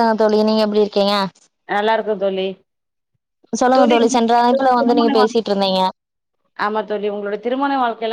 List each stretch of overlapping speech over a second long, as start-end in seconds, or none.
3.8-5.5